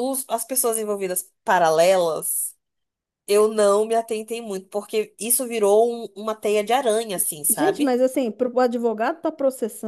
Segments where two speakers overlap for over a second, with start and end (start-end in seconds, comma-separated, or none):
none